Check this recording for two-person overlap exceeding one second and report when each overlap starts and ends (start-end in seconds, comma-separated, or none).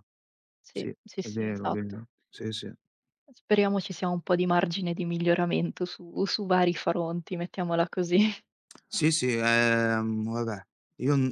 0.7-2.0